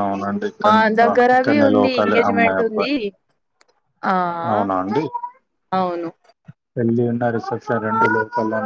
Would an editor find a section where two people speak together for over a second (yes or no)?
yes